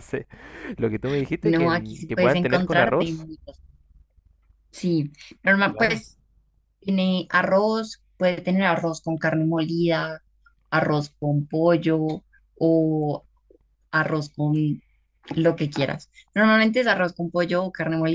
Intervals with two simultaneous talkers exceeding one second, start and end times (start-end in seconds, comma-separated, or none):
1.4-3.3